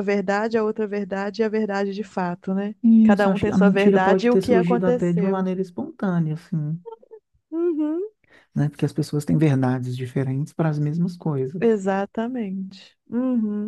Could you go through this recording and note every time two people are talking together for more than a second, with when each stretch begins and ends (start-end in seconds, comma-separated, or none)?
2.8-5.5